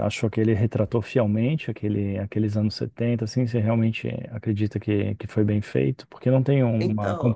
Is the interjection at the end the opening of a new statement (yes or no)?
yes